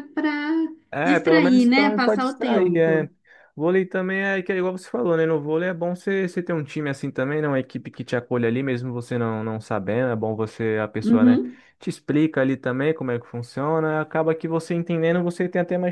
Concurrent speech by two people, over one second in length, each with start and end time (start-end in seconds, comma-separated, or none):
1.0-3.1